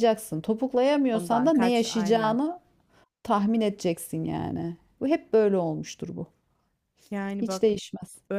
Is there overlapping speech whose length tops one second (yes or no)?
yes